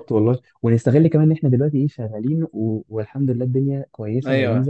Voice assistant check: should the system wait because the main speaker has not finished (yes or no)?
no